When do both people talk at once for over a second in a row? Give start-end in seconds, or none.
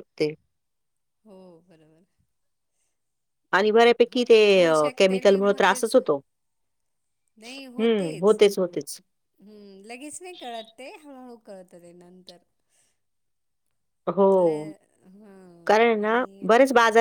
4.1-6.0